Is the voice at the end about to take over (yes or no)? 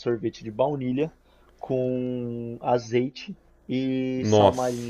no